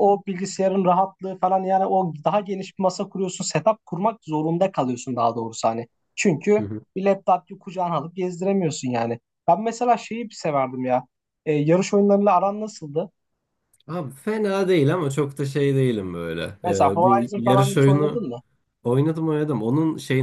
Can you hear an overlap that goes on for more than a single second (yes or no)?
yes